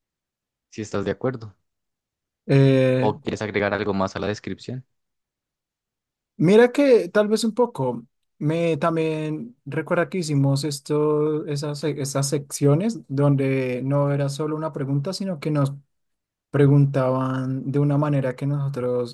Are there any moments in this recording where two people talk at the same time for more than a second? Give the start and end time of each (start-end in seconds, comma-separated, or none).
none